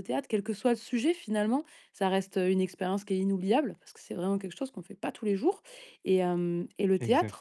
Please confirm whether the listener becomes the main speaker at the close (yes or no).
no